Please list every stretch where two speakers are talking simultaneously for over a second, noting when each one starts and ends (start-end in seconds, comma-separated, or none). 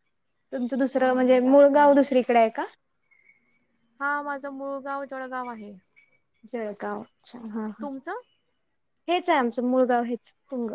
none